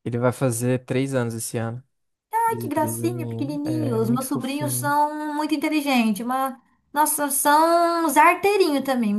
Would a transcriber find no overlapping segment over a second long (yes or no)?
no